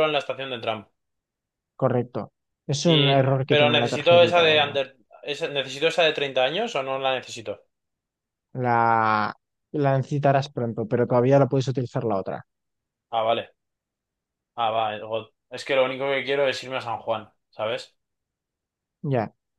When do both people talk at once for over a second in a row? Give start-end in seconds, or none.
2.8-4.8